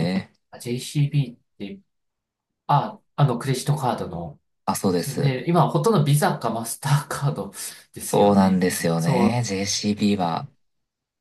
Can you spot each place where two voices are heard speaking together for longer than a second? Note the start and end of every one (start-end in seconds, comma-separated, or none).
8.1-9.4